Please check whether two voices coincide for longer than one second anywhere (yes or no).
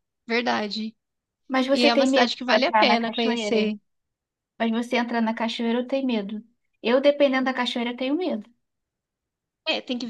yes